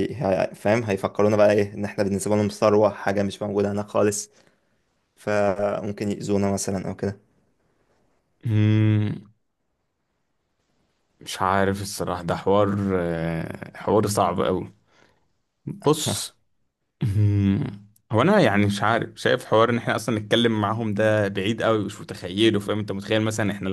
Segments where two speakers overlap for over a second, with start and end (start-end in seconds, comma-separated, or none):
none